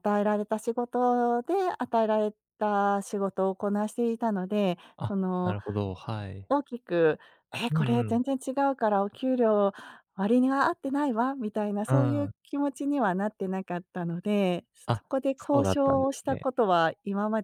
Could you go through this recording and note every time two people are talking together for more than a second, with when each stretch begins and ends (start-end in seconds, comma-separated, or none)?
14.9-16.5